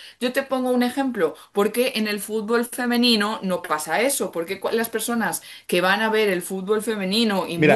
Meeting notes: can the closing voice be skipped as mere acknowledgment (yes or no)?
no